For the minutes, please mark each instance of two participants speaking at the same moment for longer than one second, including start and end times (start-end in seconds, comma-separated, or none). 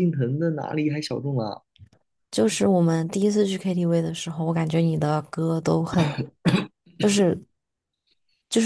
none